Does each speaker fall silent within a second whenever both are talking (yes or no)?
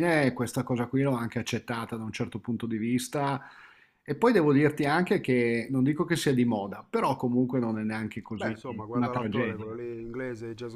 no